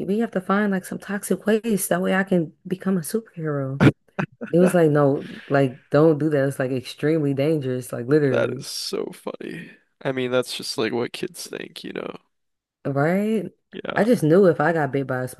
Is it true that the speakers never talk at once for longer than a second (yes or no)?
yes